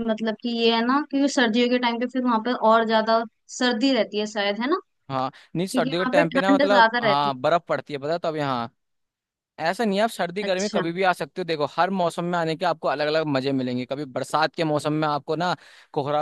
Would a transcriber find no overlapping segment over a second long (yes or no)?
no